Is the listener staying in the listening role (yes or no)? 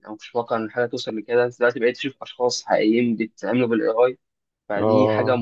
yes